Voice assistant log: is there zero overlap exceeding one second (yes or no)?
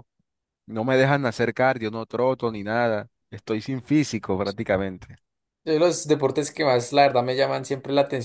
yes